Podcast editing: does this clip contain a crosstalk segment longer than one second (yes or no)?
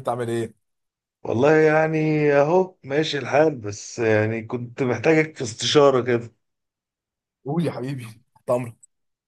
no